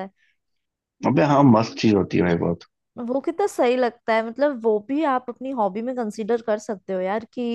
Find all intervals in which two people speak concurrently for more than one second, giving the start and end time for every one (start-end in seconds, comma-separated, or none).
none